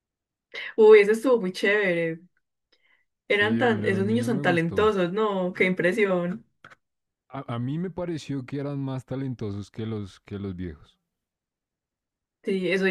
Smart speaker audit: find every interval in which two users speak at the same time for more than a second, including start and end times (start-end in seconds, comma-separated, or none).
3.3-4.9